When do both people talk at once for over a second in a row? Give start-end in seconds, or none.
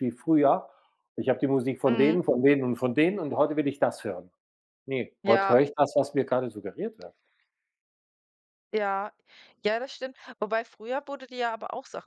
none